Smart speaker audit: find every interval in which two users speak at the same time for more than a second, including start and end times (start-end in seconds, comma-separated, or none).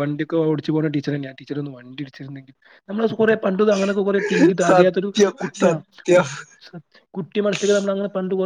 4.7-6.2